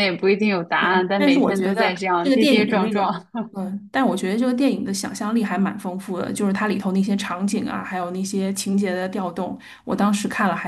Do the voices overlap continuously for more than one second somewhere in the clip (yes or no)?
yes